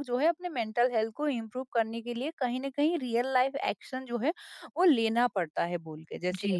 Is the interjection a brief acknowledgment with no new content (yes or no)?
no